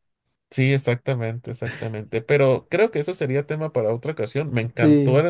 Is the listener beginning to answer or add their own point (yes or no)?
no